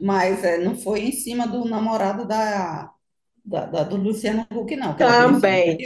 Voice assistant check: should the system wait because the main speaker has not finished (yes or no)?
no